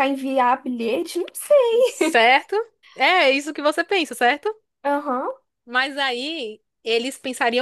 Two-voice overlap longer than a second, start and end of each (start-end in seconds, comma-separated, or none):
none